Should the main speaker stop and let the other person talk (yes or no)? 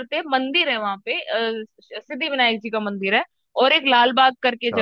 no